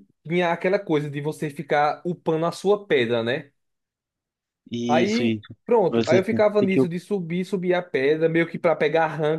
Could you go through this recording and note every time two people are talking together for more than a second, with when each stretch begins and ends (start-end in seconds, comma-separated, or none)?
4.9-6.8